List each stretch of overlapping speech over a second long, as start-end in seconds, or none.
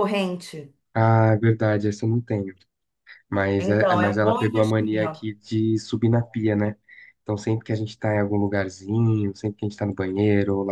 3.6-5.2